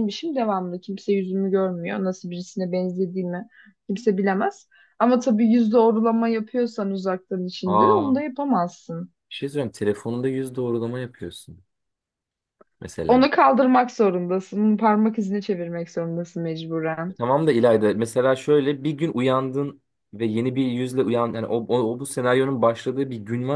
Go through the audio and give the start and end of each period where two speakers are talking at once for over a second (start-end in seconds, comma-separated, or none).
none